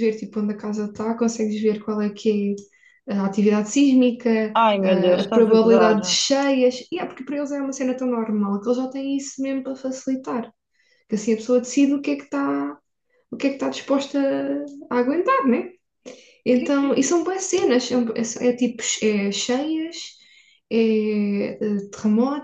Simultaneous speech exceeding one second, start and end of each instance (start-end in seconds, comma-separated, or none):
4.5-6.2